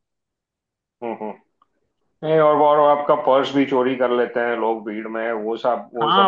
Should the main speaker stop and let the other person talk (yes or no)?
yes